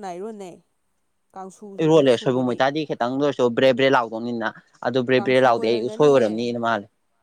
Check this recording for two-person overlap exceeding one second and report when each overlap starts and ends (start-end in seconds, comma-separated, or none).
5.1-6.5